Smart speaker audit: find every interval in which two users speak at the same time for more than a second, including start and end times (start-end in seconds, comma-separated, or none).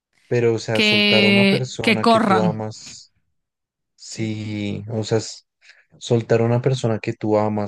0.8-2.5